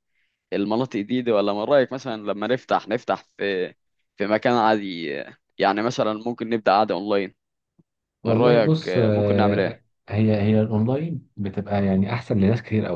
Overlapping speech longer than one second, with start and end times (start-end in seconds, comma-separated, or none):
8.3-9.8